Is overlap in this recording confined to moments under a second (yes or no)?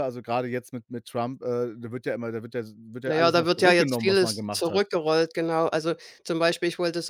no